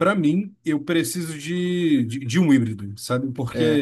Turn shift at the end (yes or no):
no